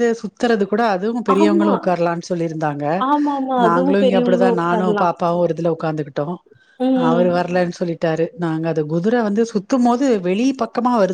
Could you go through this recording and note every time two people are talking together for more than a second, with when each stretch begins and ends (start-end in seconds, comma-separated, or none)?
3.6-5.0